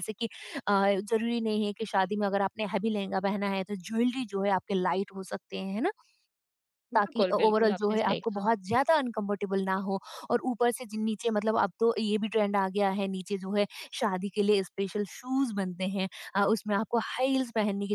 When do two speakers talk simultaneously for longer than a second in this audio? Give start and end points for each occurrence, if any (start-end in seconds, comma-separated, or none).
7.0-8.5